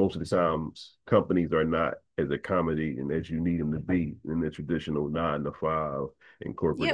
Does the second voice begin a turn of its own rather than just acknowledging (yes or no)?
yes